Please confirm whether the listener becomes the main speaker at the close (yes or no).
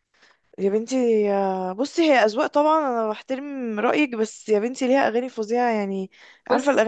no